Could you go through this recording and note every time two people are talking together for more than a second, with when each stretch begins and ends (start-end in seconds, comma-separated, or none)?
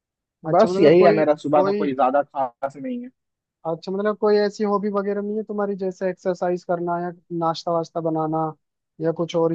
0.5-1.9